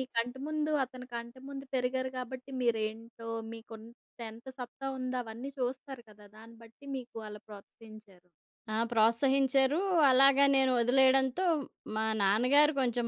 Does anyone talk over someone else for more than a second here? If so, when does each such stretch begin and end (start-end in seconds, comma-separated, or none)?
none